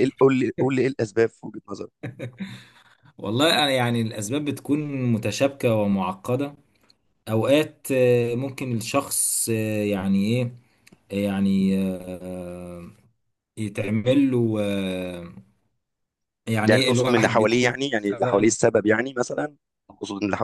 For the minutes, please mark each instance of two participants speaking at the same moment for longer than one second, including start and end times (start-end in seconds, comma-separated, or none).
16.6-18.5